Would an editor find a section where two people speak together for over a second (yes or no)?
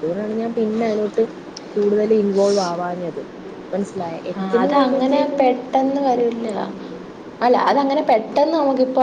no